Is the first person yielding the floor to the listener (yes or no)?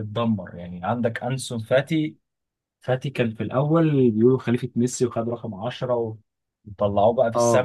no